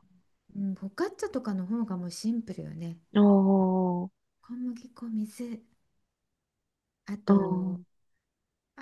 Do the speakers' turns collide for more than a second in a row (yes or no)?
no